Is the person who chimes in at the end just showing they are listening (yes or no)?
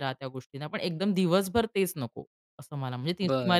no